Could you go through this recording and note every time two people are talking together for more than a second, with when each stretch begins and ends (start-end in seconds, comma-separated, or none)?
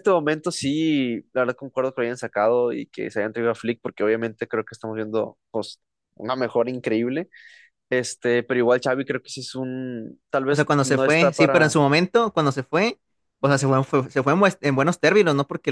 10.5-11.8